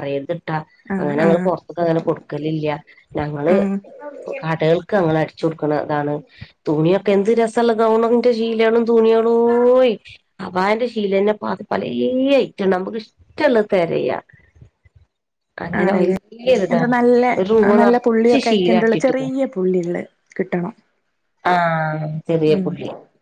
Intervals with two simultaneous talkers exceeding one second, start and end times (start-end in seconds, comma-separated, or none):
17.8-19.3